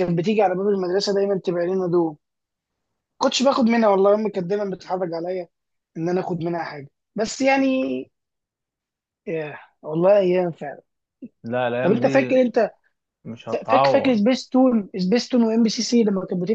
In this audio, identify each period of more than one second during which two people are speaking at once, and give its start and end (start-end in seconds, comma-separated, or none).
none